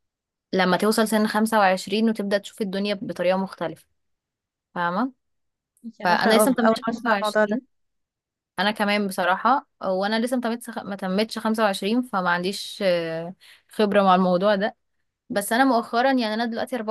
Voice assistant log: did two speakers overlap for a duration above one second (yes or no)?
yes